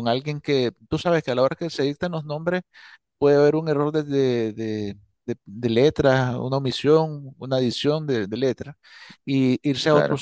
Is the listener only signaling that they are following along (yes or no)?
yes